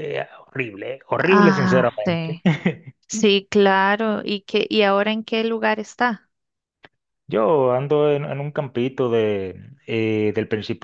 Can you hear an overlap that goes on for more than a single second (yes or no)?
yes